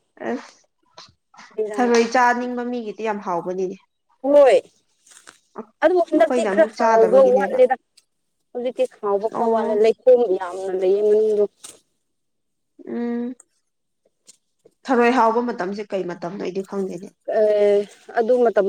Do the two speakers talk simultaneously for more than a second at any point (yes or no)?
yes